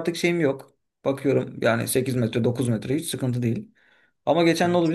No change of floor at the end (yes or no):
yes